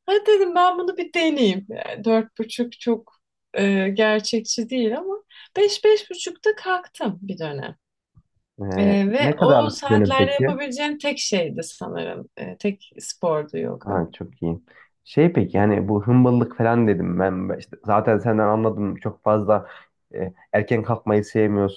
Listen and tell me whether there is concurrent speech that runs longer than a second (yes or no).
yes